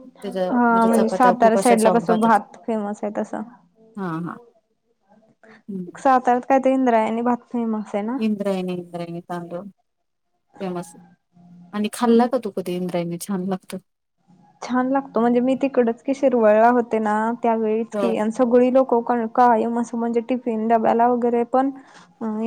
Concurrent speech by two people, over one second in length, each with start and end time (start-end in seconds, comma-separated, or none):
0.9-2.4